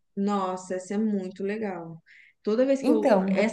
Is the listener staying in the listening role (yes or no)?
yes